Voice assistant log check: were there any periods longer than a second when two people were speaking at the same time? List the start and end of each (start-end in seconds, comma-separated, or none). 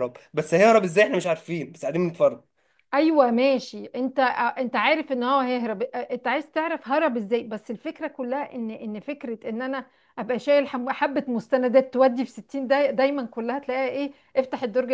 none